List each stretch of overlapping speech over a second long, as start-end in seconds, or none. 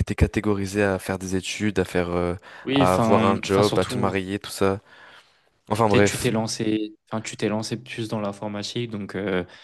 2.7-4.2